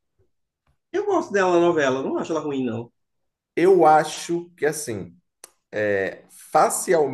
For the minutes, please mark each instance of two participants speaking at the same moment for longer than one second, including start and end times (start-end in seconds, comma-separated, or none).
none